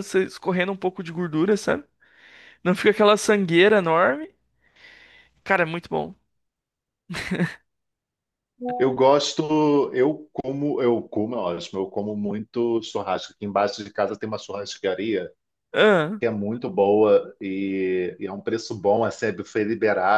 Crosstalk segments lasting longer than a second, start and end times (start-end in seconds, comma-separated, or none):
none